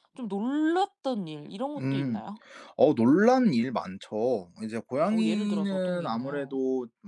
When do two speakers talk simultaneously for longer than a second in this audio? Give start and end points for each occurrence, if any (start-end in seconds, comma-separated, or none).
5.1-6.6